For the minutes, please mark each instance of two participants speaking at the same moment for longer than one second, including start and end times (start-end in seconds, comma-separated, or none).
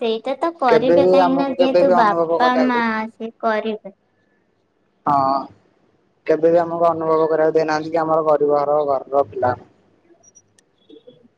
0.7-2.8